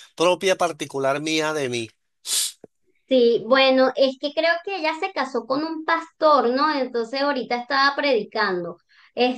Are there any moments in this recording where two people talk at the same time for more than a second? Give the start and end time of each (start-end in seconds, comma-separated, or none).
none